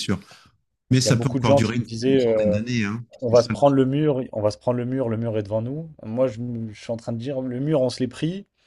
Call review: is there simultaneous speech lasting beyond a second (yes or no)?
yes